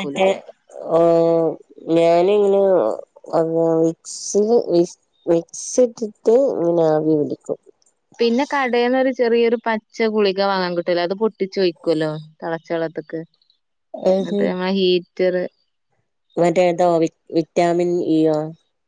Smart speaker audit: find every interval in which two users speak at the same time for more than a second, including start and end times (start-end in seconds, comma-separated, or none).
none